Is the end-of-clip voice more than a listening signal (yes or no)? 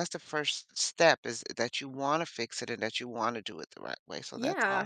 yes